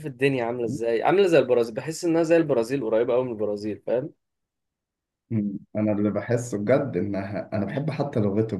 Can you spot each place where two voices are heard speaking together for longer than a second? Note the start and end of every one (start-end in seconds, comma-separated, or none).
none